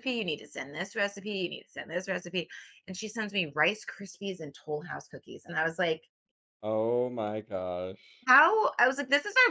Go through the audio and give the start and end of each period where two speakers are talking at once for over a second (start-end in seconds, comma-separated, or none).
none